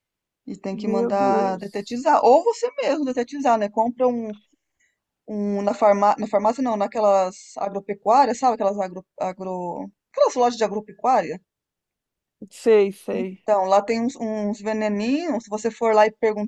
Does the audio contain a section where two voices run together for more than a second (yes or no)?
yes